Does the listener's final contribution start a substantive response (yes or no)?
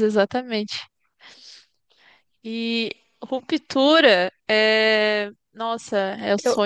no